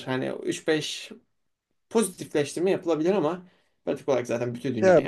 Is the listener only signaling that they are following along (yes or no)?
no